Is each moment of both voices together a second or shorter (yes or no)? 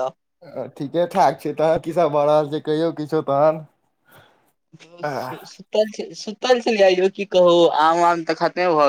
yes